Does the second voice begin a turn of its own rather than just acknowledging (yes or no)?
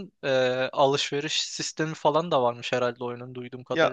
yes